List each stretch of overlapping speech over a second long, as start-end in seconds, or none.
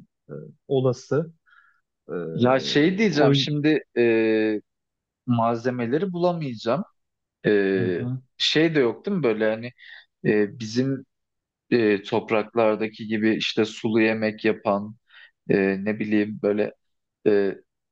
none